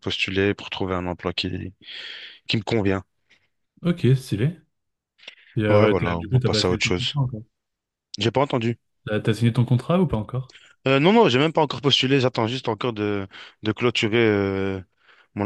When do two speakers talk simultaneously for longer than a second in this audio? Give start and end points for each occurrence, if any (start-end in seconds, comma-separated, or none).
5.7-7.1